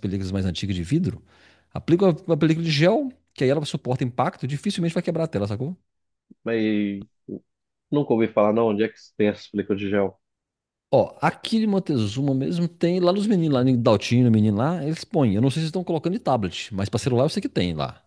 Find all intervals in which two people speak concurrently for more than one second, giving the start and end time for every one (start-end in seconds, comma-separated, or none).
none